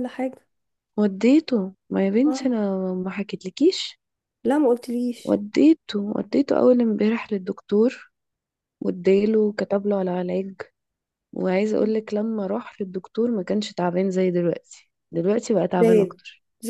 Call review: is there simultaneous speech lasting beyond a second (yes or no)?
no